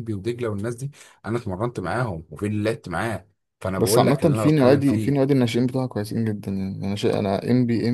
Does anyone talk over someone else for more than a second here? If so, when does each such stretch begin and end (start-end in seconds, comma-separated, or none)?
3.8-5.2